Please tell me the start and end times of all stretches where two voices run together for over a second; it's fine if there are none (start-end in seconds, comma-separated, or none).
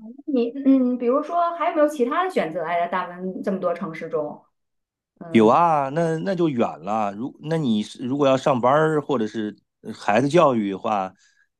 none